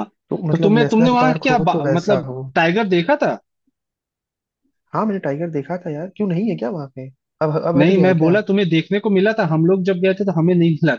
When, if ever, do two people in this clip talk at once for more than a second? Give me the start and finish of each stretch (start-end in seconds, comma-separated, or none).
0.5-2.4